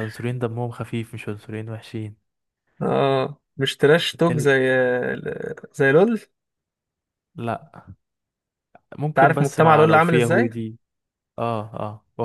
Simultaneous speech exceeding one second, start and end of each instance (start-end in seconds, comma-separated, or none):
9.2-10.5